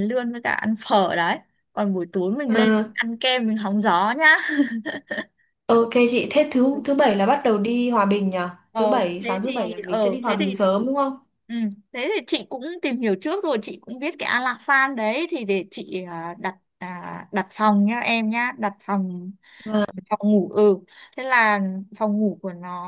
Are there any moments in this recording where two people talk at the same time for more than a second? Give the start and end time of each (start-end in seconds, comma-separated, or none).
8.8-10.6